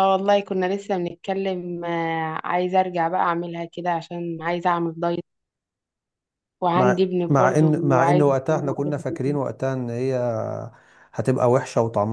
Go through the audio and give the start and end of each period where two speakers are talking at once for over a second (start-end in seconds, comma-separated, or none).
6.7-8.9